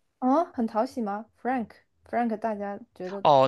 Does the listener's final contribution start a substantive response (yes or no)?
yes